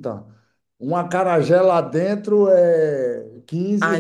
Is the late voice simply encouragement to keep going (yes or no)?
no